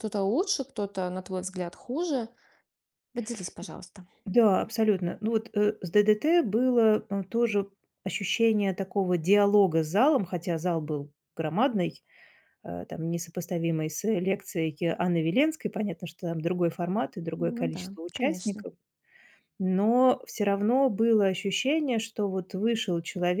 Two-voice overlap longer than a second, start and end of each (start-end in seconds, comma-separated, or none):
17.4-18.6